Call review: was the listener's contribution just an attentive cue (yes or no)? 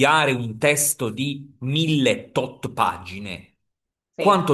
yes